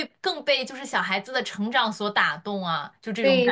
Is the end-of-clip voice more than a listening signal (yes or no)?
yes